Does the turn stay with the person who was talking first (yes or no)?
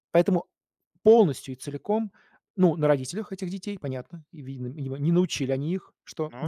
yes